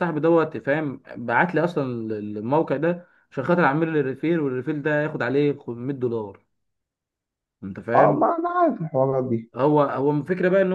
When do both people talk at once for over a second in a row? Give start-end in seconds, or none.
none